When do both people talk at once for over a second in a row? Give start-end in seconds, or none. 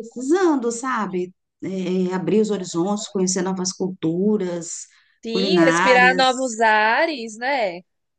5.3-6.5